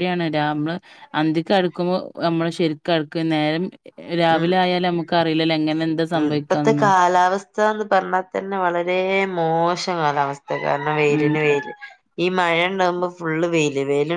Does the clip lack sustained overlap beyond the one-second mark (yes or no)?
yes